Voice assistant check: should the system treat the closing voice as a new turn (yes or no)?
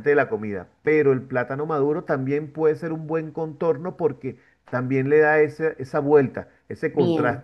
no